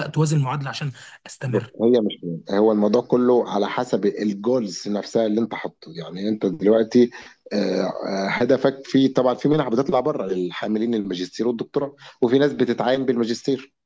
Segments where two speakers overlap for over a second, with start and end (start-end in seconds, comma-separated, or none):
none